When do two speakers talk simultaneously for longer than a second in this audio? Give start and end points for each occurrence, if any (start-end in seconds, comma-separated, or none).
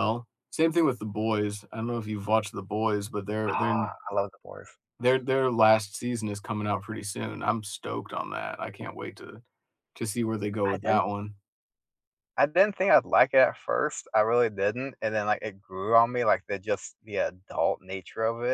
none